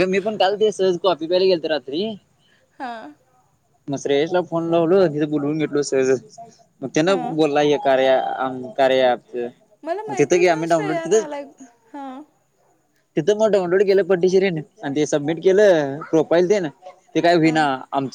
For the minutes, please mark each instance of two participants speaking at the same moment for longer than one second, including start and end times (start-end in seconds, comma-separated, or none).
10.1-11.3